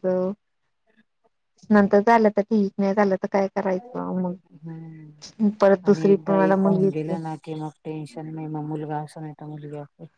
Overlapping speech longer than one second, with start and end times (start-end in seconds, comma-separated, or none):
5.9-7.2